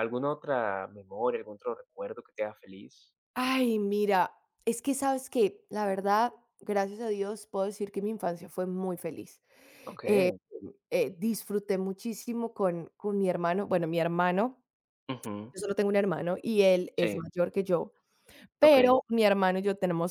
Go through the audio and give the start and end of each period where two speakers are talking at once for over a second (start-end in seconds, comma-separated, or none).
none